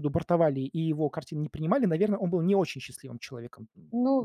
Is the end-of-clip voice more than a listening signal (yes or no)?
yes